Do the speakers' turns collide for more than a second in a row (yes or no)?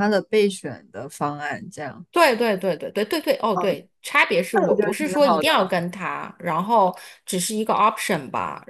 yes